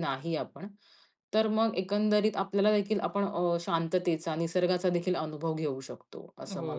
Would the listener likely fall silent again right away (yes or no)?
no